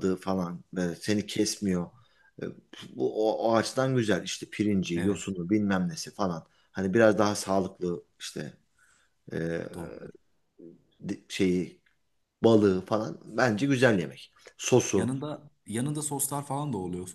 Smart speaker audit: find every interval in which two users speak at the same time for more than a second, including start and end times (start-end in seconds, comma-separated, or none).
none